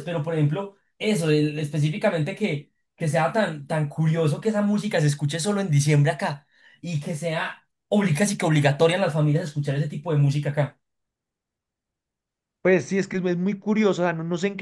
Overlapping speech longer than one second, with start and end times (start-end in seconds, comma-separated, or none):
none